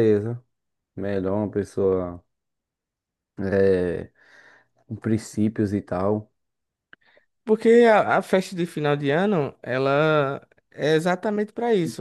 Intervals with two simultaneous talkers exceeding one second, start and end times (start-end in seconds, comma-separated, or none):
none